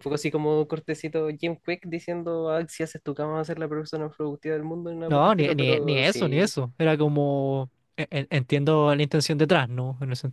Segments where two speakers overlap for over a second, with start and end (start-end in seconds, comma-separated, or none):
5.1-6.5